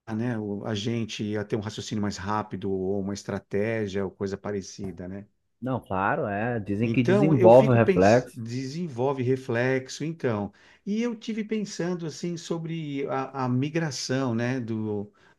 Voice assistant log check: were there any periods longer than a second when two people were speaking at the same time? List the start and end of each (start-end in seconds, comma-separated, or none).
6.8-8.4